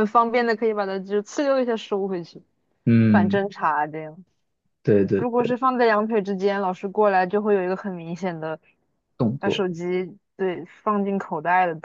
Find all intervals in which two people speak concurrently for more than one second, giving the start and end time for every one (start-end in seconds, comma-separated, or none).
none